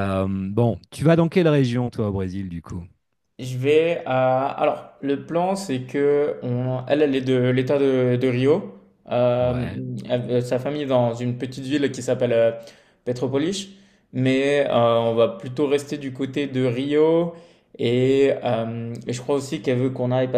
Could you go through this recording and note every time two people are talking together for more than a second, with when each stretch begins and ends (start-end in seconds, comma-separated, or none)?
none